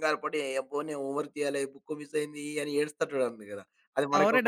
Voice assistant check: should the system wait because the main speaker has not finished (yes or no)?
no